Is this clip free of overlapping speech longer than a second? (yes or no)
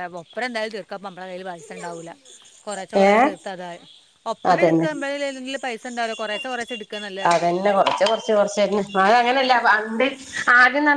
yes